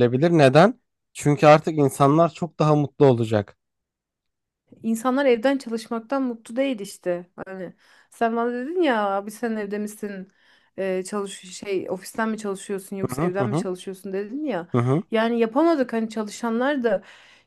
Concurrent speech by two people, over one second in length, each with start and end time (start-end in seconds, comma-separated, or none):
none